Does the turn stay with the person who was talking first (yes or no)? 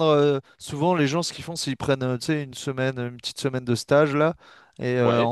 yes